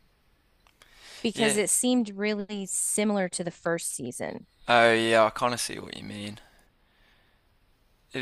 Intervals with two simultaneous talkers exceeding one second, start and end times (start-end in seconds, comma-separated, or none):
none